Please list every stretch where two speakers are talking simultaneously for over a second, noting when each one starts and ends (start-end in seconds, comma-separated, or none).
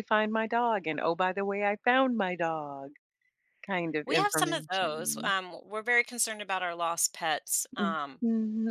4.0-5.3